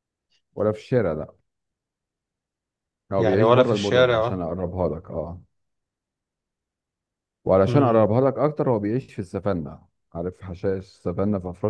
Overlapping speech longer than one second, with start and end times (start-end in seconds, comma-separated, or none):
3.2-4.4